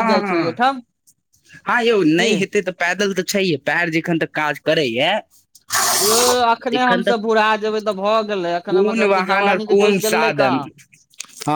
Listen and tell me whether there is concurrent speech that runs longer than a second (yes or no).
yes